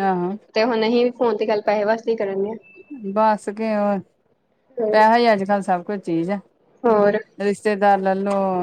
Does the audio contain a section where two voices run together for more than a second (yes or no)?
no